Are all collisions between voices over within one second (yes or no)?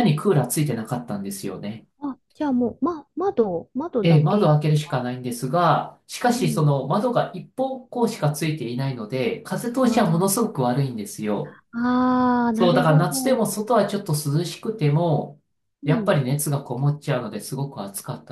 yes